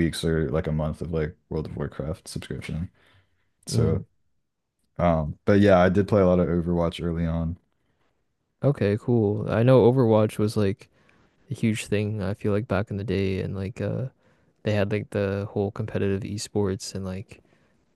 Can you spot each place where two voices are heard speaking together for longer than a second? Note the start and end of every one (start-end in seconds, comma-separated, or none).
none